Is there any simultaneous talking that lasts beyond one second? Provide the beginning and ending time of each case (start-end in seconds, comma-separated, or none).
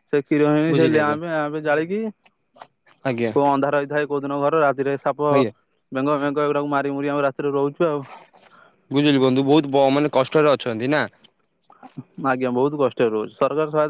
none